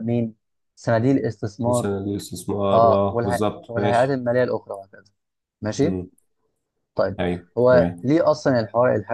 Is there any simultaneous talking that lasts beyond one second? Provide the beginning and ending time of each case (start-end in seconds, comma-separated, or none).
2.7-4.2